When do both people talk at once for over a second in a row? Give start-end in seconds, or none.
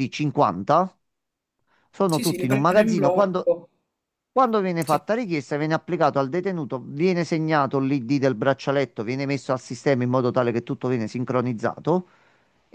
2.0-3.5